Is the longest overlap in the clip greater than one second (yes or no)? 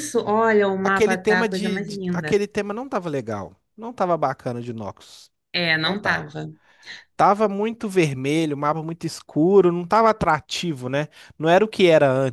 yes